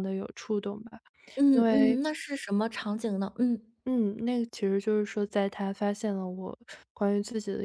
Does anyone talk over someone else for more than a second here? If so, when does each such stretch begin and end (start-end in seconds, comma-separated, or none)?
none